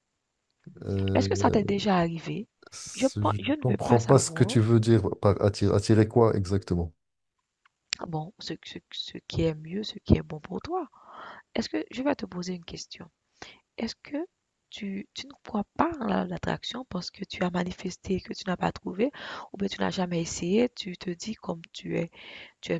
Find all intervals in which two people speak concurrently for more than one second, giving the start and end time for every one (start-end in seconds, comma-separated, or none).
2.9-4.6